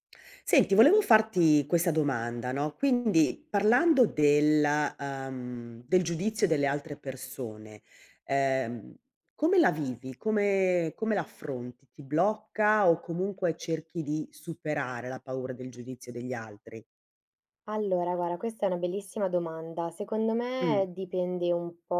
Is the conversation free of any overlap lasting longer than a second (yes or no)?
yes